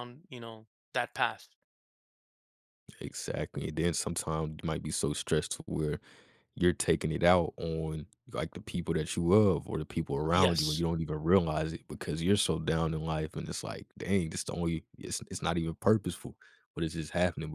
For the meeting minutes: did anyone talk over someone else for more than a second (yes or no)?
no